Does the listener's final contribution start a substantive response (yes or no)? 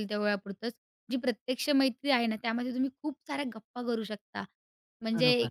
no